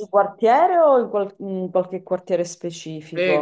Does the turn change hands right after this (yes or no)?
yes